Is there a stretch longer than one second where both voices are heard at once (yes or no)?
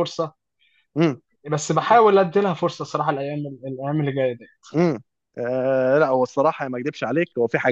no